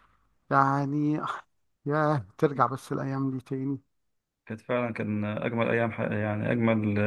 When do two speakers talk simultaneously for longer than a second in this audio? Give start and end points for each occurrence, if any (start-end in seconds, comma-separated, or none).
none